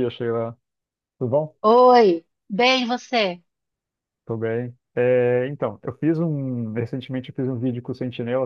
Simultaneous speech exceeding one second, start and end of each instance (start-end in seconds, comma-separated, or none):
none